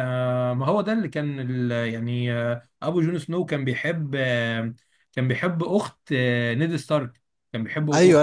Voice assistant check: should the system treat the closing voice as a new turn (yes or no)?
yes